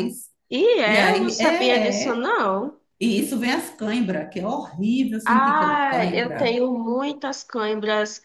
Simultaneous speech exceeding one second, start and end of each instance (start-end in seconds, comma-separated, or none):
0.8-2.2, 5.3-6.6